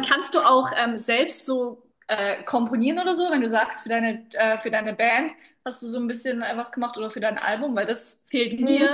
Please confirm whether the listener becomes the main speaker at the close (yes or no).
yes